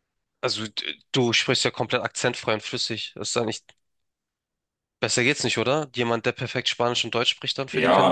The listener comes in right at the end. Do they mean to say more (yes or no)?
yes